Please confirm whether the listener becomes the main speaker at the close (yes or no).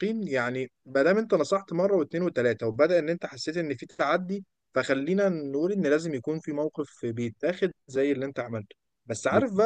no